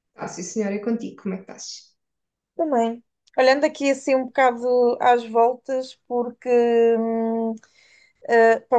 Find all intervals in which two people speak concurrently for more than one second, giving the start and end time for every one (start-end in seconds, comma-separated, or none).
none